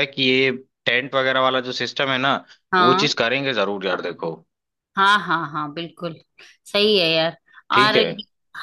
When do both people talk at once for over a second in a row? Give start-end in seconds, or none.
none